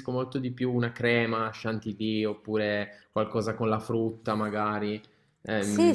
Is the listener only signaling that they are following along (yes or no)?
no